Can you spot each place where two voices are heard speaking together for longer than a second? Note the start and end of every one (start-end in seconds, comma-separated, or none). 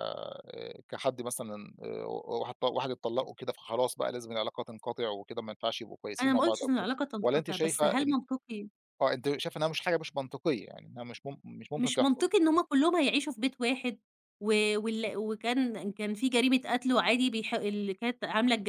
6.2-8.2